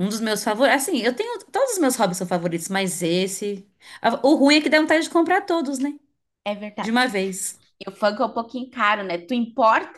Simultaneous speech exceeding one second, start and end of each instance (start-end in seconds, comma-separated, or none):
none